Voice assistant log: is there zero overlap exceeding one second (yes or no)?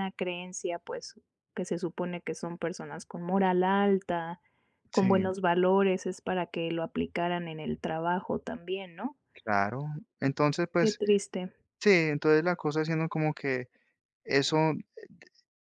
yes